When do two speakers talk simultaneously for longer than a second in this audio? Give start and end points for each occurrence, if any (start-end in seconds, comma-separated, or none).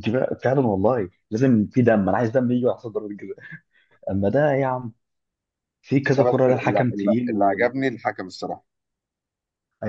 6.2-7.9